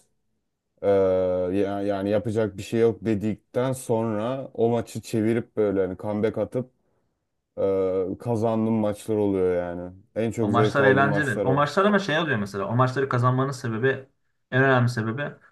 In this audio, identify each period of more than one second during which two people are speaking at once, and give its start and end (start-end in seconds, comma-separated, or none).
10.4-11.7